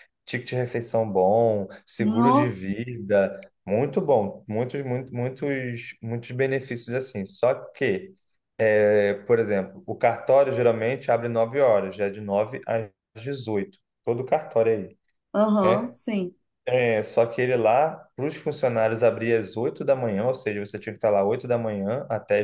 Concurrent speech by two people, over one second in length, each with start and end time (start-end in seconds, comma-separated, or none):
none